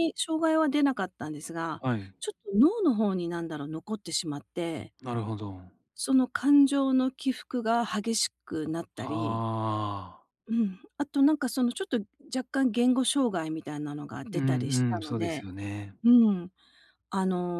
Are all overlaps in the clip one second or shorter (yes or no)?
no